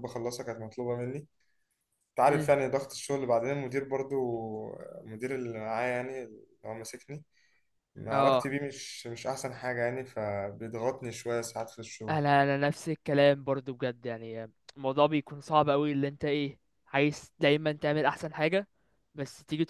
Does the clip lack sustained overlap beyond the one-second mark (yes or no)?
yes